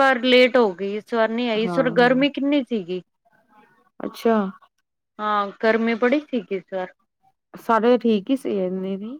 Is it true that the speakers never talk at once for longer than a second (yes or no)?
yes